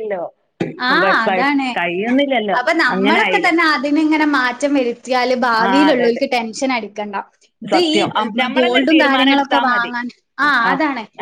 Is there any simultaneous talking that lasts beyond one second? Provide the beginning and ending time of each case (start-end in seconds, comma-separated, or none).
7.7-9.9